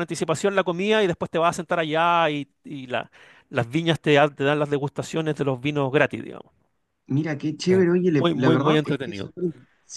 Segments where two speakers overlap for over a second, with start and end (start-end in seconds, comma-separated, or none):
7.7-9.3